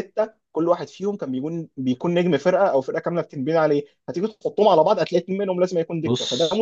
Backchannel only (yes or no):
no